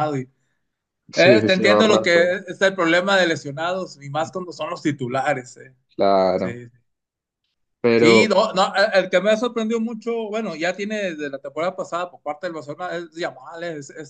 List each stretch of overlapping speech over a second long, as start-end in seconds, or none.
1.1-2.4